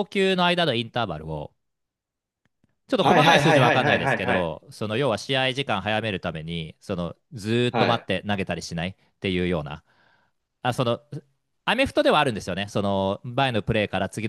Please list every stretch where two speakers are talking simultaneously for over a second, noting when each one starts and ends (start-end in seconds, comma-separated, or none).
3.0-4.5